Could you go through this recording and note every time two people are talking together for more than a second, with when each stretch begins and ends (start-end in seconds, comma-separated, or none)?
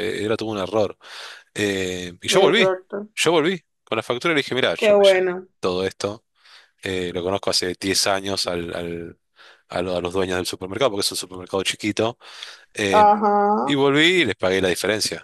none